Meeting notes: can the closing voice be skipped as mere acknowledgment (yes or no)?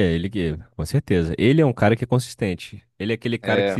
yes